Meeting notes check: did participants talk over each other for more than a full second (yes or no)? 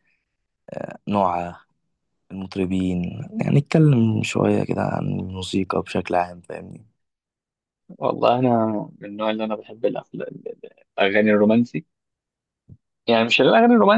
no